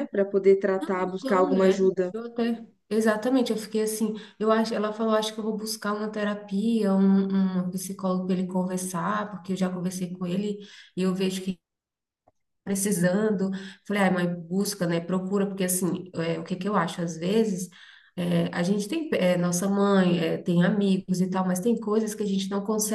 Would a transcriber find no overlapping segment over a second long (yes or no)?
no